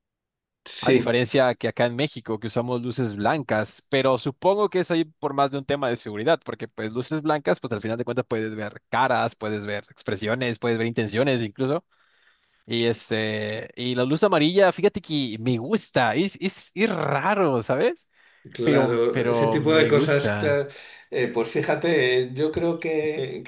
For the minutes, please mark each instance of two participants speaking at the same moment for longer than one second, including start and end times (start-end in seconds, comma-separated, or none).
18.6-20.6